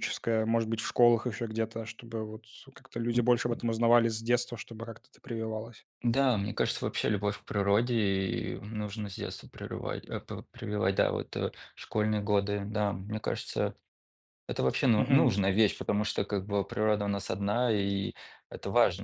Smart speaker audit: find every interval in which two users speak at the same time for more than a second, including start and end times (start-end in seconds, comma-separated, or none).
none